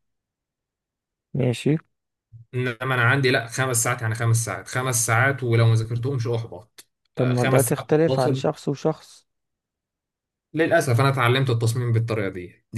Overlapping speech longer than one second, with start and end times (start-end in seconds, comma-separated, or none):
7.1-8.4